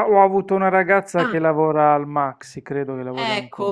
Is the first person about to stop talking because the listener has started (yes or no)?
yes